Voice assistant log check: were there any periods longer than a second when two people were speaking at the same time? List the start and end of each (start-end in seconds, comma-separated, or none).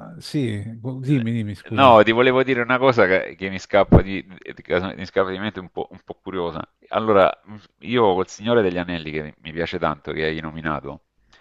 none